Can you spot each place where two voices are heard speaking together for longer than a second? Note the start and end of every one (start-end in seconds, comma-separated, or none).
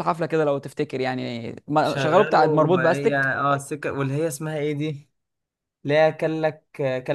1.8-3.3